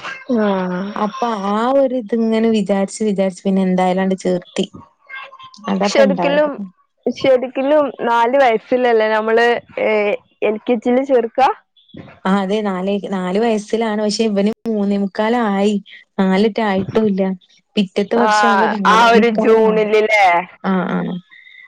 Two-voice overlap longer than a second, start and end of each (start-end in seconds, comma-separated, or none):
18.3-20.0